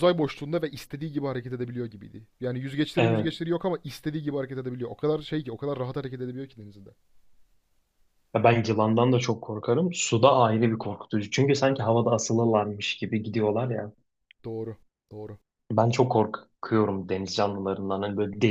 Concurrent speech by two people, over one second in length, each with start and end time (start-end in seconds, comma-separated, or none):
none